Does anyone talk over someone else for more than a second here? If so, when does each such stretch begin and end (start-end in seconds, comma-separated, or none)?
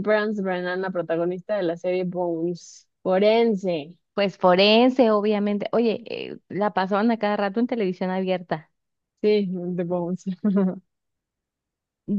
none